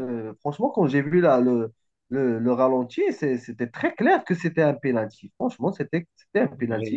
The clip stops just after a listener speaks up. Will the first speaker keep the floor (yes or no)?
no